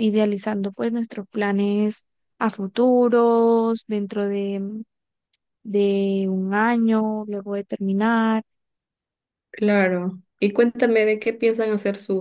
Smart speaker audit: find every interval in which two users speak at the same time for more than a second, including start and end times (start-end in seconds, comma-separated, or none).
none